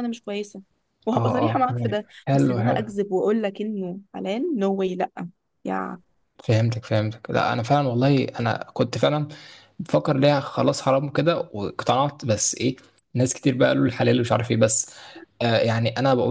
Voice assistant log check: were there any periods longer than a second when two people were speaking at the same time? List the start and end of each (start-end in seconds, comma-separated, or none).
1.2-2.9